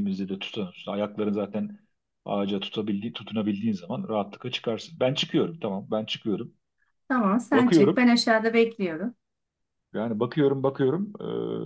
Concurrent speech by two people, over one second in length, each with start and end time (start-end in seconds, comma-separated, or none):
none